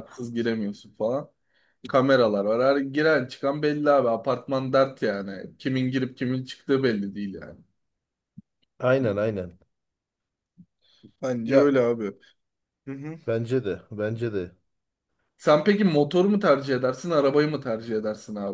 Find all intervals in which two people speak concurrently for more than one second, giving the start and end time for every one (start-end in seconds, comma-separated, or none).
none